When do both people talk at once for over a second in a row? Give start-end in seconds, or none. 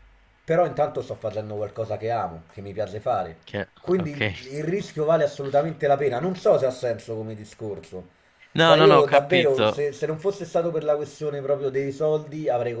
8.6-9.8